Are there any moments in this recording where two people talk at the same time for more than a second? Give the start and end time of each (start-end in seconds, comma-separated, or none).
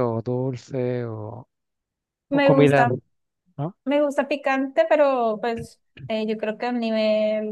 none